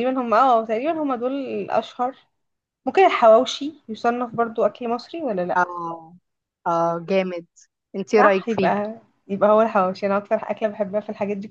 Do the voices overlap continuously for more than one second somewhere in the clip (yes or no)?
no